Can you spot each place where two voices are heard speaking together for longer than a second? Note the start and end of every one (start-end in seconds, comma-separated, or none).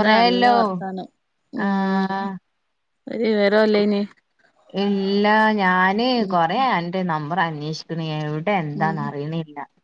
none